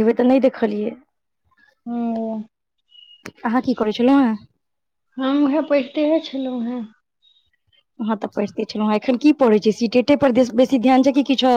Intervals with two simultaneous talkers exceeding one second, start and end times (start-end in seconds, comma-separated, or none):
none